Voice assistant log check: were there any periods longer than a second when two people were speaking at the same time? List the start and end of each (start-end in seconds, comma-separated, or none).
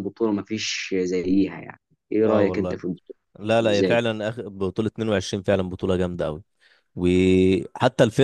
none